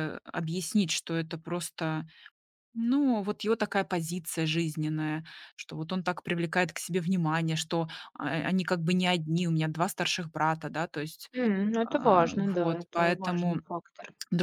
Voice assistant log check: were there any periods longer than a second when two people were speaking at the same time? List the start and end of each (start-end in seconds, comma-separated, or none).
11.8-13.6